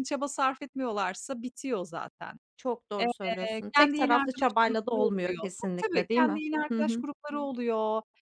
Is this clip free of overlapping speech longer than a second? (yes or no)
no